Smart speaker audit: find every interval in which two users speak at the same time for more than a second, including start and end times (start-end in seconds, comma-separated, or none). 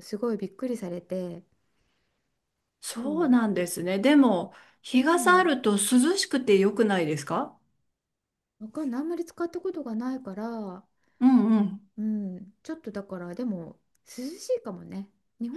none